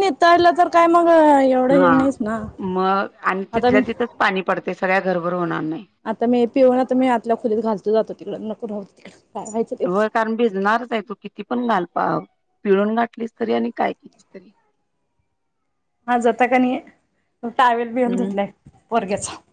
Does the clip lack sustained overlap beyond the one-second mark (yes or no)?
yes